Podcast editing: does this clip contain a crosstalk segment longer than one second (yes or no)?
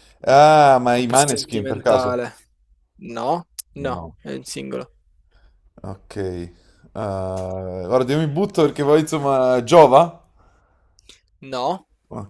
yes